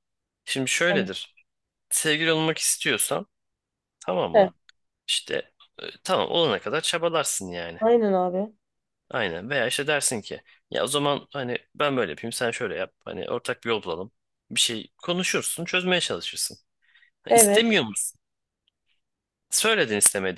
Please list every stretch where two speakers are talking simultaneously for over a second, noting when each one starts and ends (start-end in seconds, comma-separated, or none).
none